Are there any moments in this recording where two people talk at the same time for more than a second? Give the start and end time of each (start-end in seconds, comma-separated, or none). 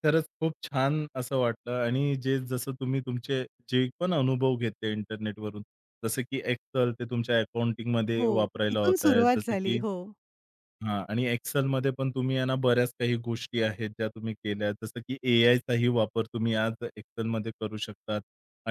8.2-9.8